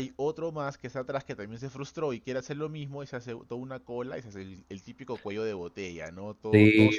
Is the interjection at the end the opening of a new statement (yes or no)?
yes